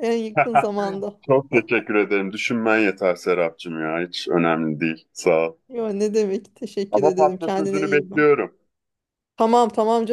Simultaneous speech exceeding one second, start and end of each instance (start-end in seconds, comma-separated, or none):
6.9-8.3